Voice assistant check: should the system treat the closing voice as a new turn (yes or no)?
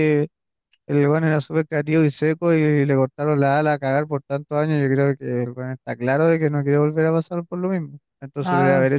no